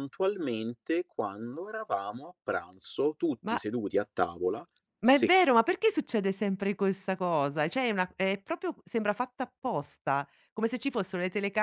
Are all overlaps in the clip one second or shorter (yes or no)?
yes